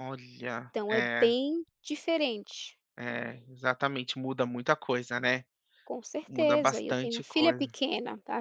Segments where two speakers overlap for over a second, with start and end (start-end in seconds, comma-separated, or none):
6.3-7.7